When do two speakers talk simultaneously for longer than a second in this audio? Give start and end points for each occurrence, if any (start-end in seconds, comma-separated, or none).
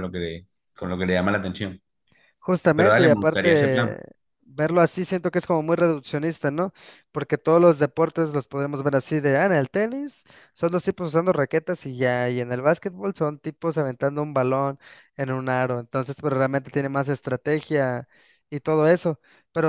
2.7-4.0